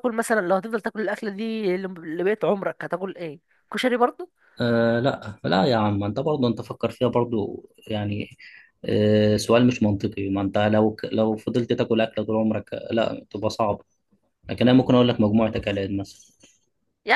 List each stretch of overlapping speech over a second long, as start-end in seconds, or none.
none